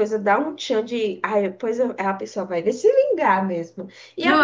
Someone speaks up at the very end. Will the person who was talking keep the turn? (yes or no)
yes